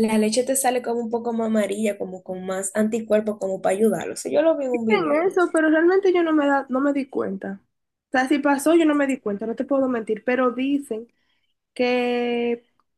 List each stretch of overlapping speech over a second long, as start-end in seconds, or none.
none